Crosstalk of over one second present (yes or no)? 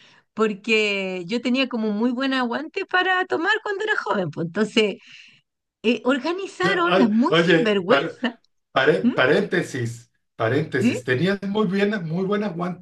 yes